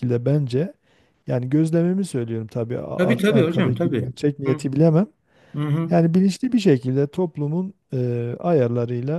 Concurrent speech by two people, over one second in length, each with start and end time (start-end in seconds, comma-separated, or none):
3.0-4.6